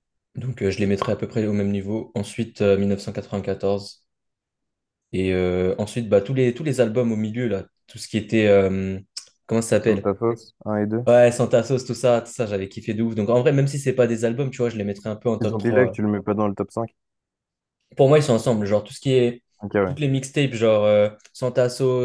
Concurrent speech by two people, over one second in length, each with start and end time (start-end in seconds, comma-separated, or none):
none